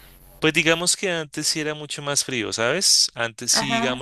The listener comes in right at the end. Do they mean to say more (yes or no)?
no